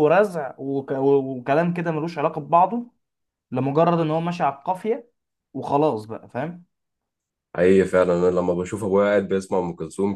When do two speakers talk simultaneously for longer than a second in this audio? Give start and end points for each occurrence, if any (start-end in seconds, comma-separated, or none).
none